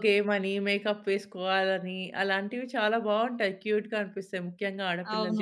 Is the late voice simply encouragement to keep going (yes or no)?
no